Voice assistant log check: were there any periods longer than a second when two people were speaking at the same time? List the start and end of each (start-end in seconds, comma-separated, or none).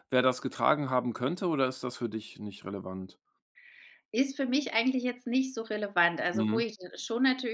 none